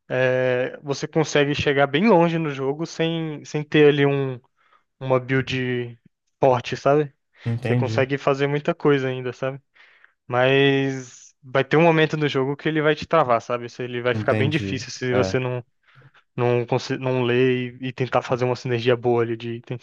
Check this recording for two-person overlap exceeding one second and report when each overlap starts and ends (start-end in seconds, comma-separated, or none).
14.1-15.4